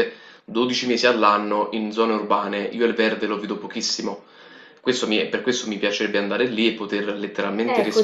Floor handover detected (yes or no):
yes